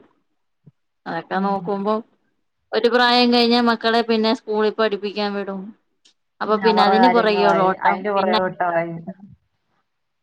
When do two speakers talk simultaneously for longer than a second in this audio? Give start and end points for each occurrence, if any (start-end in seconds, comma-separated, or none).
6.7-8.4